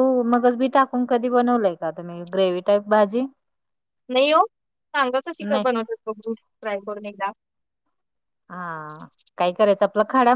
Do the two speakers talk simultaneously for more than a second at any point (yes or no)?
no